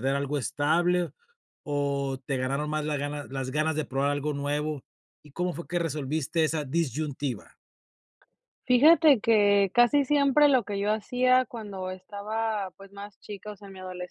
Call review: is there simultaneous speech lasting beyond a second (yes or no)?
no